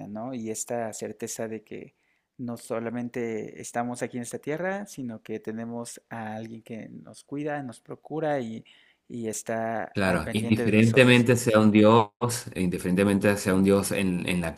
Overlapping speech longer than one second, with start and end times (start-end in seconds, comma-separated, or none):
9.9-11.3